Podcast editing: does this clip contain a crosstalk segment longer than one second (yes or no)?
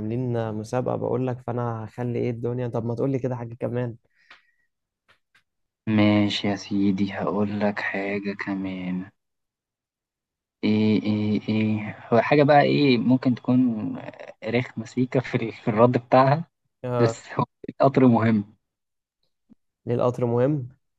no